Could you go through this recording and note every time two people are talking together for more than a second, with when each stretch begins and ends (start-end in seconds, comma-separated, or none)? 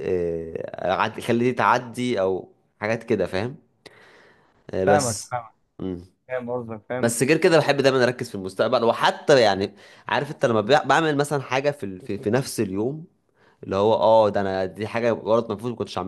none